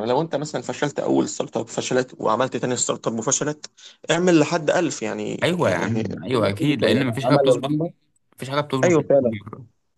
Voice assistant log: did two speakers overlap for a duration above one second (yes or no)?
yes